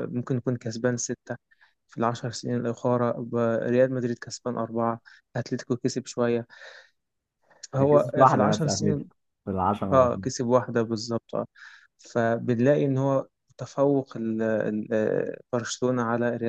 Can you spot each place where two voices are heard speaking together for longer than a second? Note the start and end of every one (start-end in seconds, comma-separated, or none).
7.8-9.0